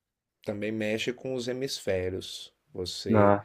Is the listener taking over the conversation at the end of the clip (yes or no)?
no